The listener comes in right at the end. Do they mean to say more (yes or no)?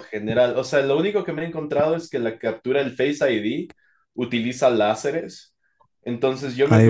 no